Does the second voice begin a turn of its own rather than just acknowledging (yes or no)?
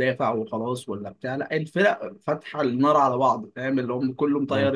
no